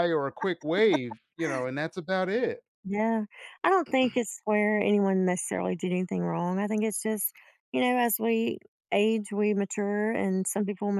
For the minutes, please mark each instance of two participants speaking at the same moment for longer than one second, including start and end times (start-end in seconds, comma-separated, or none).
none